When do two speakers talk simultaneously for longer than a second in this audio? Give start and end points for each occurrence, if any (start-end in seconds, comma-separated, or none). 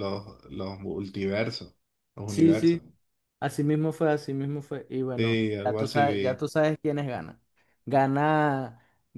5.2-6.4